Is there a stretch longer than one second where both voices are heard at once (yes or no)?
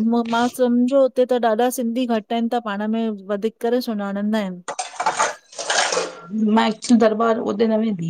no